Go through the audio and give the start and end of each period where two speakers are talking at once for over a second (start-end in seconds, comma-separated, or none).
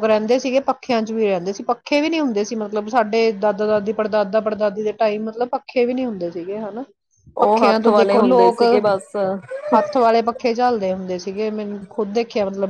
7.4-8.6